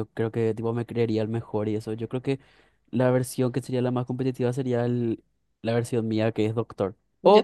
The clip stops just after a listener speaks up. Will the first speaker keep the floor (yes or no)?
yes